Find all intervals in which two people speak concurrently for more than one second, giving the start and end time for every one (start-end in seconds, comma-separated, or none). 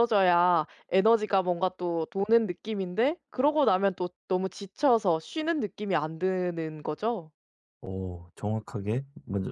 none